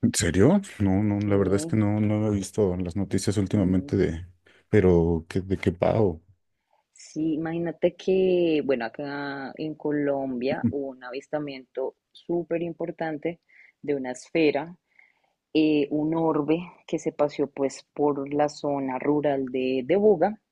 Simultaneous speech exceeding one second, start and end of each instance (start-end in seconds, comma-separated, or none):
none